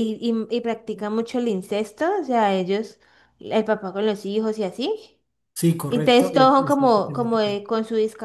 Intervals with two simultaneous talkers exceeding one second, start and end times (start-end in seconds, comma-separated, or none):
5.9-7.6